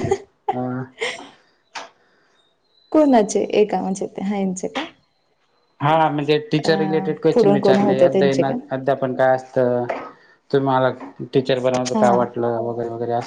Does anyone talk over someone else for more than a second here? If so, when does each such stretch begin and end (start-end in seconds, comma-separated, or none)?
6.7-8.5